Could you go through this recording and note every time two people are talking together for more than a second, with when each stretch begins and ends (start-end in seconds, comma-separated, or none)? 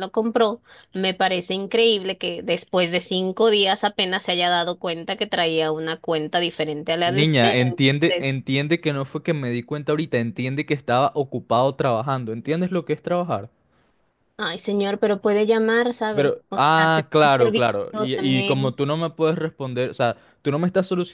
7.0-8.3, 16.1-18.7